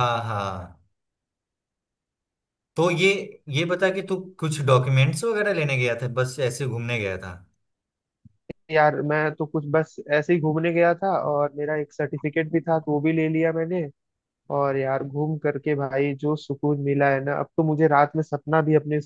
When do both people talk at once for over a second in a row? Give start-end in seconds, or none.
none